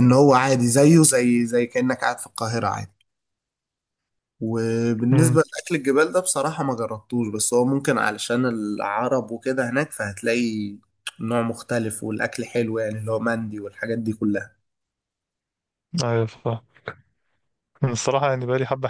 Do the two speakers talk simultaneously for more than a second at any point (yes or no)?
no